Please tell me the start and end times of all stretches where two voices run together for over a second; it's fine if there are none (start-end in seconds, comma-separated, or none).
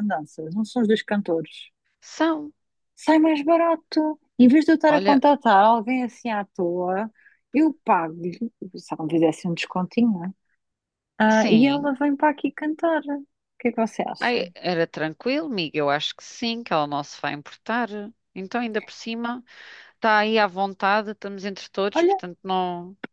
none